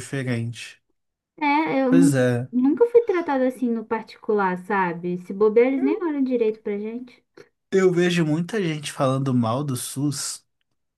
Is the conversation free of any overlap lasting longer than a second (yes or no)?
yes